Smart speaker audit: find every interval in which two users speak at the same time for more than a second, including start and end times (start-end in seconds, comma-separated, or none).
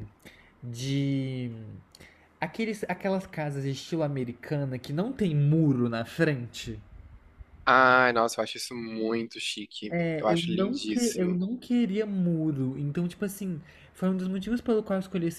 9.9-11.4